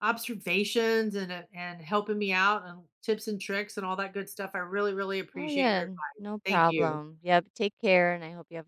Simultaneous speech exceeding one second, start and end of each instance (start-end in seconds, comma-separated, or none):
5.3-7.0